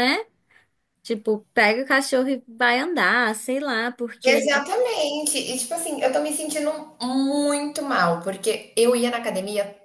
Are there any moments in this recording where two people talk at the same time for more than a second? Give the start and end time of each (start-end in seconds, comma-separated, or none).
none